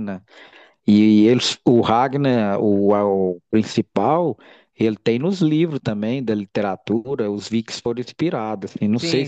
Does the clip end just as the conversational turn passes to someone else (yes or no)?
yes